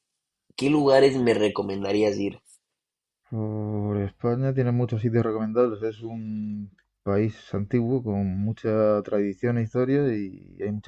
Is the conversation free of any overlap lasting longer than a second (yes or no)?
yes